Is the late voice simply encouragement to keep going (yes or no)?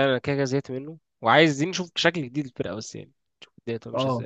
no